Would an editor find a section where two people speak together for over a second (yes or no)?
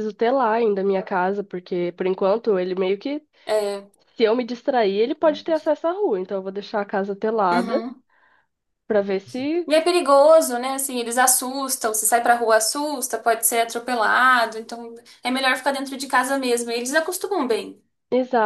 no